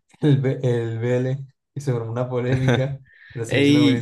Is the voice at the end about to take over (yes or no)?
yes